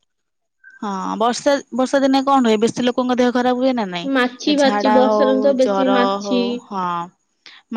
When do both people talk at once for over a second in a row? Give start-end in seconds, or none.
4.2-6.4